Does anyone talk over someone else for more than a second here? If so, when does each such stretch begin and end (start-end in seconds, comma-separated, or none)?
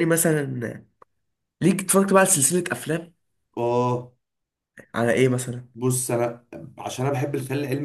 none